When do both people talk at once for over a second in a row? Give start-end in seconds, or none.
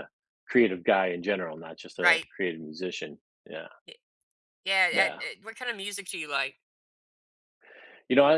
none